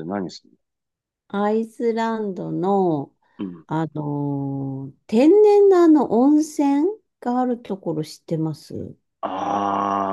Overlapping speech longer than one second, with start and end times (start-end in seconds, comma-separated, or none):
none